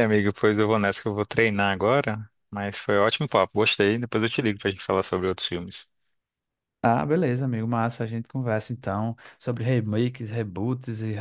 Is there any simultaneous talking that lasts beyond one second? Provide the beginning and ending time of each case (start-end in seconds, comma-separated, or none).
none